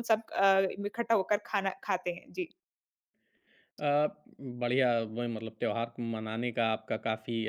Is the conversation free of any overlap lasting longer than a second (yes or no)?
yes